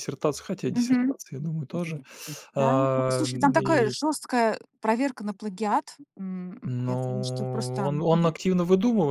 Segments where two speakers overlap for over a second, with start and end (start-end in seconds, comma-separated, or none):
2.5-3.9, 6.6-7.9